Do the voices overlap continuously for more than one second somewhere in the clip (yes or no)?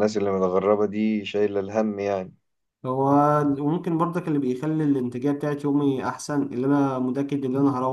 no